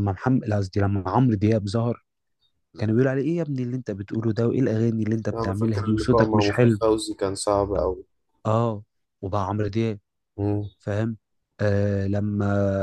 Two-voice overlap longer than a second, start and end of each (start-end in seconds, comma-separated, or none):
5.3-6.8